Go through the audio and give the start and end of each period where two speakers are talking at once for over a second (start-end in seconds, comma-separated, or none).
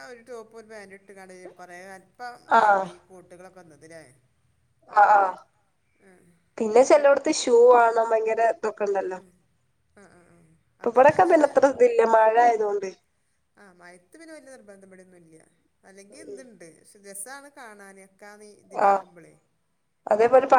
none